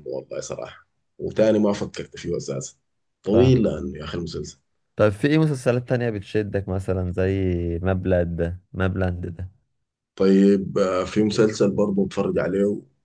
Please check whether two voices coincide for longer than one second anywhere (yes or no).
no